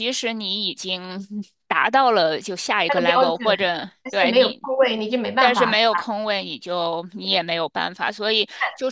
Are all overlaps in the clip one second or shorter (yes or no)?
yes